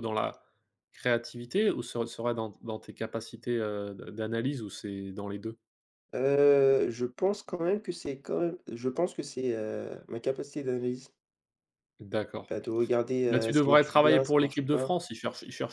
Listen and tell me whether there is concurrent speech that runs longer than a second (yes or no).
yes